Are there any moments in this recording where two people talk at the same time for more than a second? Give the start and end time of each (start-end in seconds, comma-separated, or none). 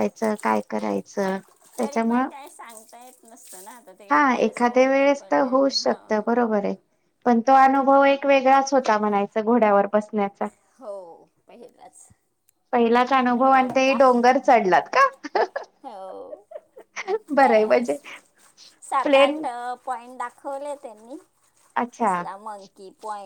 4.1-6.4